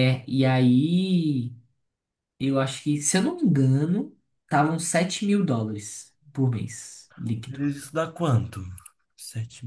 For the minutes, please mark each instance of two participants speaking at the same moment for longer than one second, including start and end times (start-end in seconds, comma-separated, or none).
none